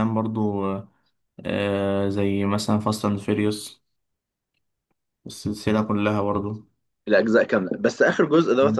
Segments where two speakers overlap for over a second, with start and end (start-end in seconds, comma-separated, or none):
none